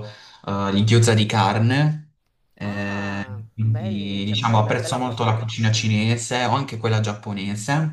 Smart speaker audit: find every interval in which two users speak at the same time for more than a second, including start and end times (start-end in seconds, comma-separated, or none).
2.6-5.4